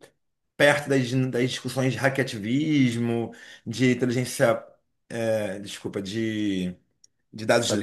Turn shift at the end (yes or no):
no